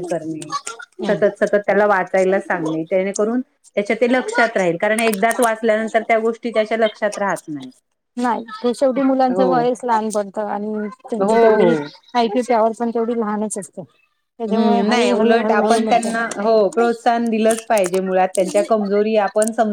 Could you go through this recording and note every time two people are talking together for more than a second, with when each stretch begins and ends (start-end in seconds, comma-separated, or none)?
14.5-16.1